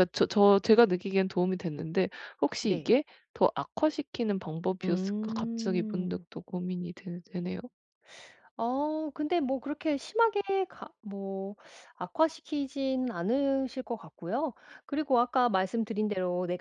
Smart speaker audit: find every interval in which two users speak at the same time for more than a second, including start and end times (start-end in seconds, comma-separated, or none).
4.8-6.2